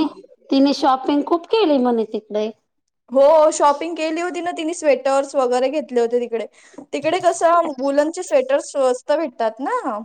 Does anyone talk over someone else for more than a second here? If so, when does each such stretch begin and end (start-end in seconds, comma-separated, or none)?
none